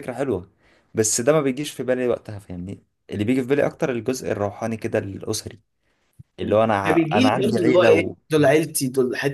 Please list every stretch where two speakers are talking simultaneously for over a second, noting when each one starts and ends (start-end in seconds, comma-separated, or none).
6.4-8.2